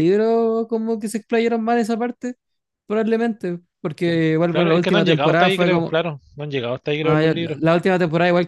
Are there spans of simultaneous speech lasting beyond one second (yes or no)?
yes